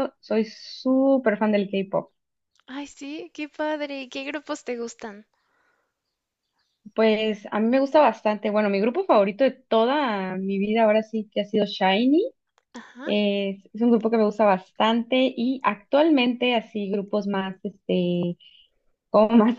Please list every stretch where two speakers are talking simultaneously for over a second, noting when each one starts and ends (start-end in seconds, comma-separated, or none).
none